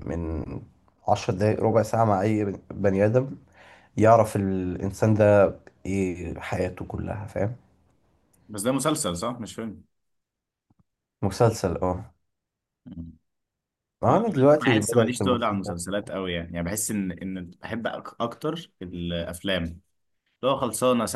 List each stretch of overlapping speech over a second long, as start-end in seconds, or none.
14.6-15.8